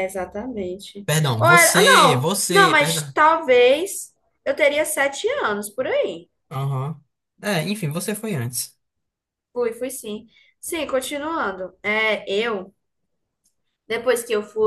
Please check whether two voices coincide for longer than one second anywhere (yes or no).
yes